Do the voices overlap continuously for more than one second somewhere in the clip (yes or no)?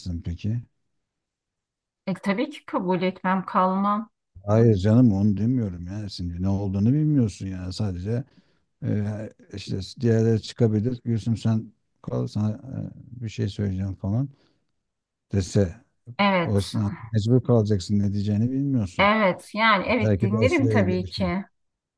yes